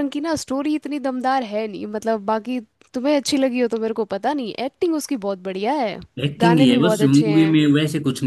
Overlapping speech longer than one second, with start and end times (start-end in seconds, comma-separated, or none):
6.4-7.6